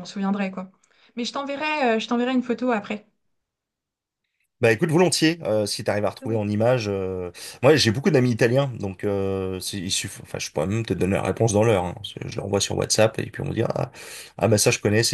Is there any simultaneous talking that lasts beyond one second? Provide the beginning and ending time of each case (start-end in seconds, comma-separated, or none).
none